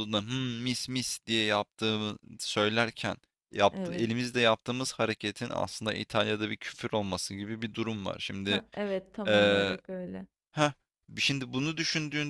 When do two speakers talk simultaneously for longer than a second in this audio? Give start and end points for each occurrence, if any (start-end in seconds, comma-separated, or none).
none